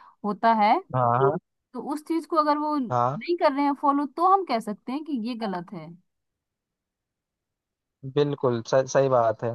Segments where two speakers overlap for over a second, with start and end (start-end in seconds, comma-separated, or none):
none